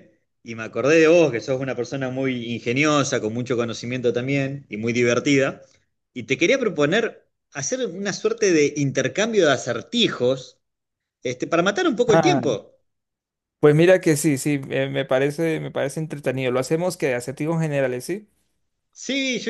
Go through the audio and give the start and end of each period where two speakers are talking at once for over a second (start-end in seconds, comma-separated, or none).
none